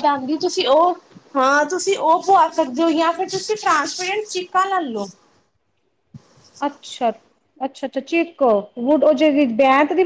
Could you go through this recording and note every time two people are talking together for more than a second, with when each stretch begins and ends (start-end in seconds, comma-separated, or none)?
none